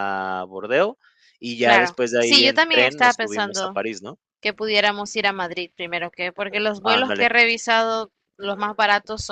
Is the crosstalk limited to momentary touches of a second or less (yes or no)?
no